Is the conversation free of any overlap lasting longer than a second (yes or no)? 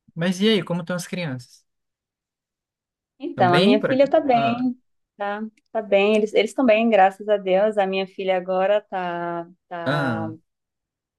no